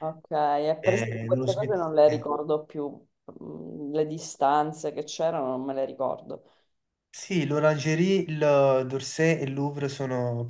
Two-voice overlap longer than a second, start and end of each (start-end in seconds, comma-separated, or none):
0.8-2.3